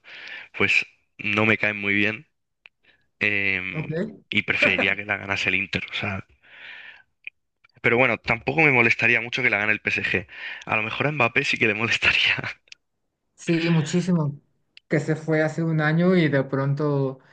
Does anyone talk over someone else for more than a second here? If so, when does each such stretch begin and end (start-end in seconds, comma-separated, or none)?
none